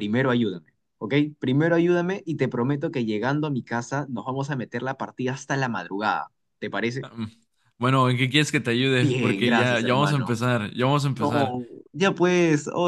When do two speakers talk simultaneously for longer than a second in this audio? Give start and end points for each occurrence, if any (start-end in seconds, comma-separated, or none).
9.0-10.4